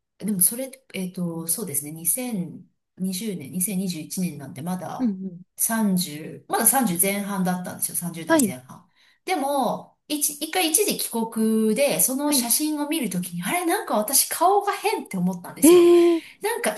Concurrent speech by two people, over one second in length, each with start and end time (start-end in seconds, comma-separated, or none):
none